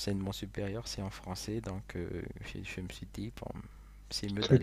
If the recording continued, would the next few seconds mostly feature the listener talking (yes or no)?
yes